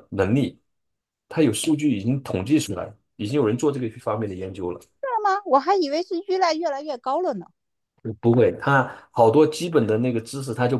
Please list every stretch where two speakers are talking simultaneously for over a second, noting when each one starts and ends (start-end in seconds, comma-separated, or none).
none